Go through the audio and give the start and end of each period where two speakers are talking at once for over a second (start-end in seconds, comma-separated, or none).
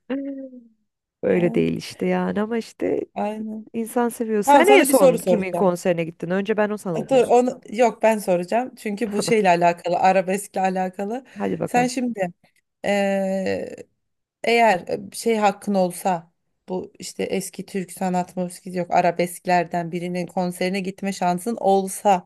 4.4-5.8